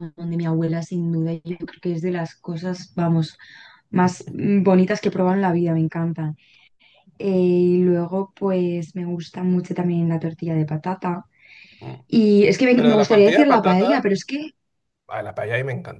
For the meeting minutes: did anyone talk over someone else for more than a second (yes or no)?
yes